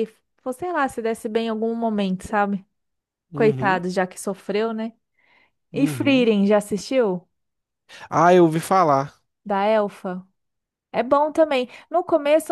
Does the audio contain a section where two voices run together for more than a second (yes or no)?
no